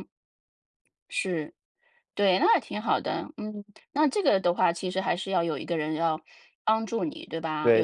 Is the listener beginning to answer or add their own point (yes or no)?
yes